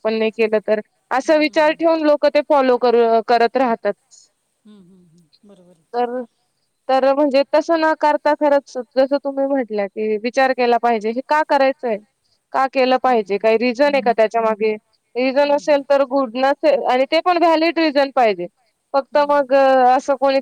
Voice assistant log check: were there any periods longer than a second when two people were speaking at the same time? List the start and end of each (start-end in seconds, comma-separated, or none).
none